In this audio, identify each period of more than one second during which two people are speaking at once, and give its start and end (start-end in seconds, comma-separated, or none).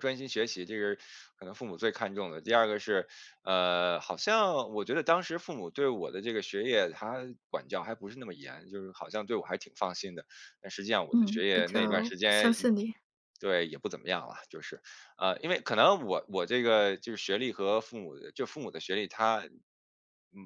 11.1-12.7